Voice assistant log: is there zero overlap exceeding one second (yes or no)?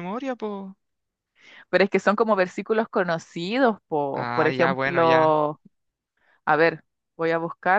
no